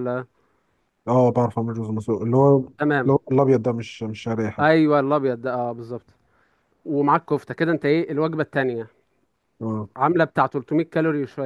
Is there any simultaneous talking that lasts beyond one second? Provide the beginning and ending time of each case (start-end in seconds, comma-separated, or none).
none